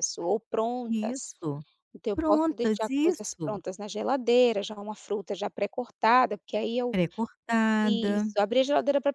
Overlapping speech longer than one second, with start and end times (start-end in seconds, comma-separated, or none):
2.1-3.6